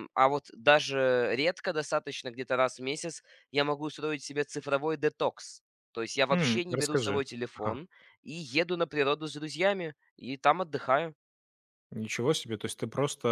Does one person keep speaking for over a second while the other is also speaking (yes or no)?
yes